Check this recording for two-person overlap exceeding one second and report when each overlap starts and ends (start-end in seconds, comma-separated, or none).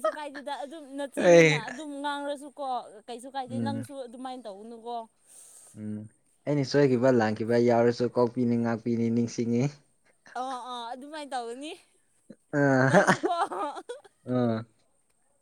none